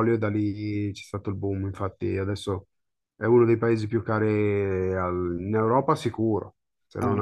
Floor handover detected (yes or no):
yes